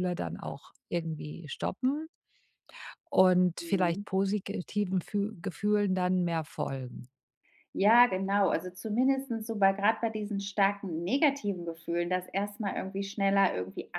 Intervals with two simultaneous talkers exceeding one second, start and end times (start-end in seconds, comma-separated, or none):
none